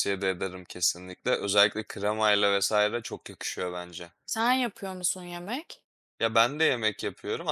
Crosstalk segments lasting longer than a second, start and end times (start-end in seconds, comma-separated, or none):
none